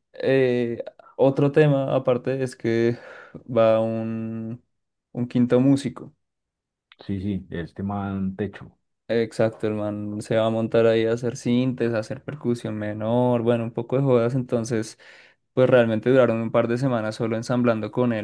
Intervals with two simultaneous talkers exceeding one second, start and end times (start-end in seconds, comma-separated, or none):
none